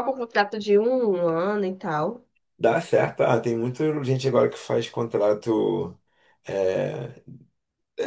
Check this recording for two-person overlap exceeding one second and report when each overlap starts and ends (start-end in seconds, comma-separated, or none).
none